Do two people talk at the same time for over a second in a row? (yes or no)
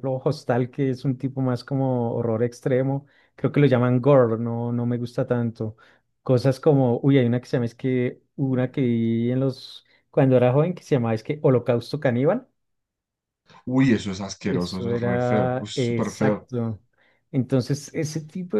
yes